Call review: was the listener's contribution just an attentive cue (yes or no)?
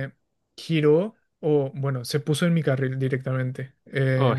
yes